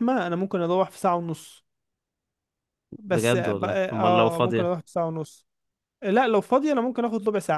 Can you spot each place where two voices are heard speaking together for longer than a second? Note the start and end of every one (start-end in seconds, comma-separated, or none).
3.1-4.7